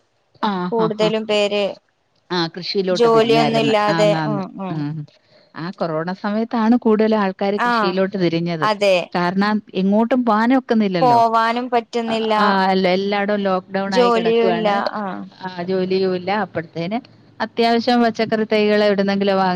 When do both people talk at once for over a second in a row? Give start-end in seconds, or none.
none